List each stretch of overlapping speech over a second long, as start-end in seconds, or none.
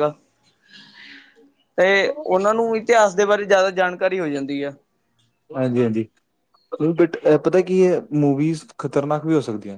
none